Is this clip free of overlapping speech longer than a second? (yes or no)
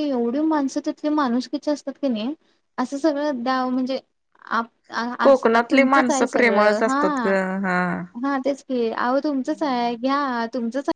no